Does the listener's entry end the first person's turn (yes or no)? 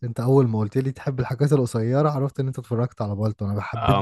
yes